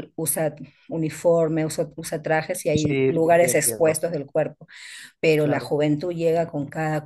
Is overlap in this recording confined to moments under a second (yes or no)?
no